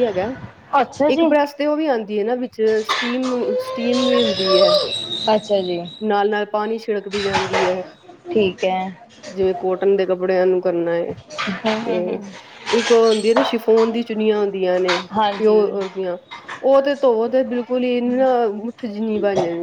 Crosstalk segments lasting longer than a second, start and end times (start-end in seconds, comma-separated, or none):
none